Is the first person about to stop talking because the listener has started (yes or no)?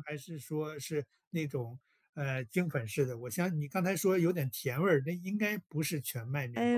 yes